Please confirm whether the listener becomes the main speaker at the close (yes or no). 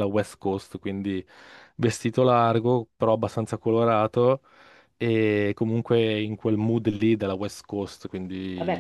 yes